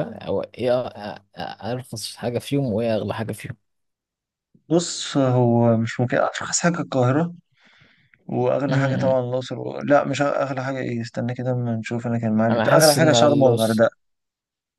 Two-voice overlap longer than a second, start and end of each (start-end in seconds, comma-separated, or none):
12.5-13.8